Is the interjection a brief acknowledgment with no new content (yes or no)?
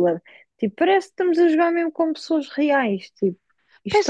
no